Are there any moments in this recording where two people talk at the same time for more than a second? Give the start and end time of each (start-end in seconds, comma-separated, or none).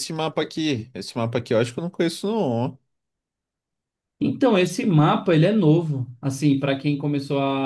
none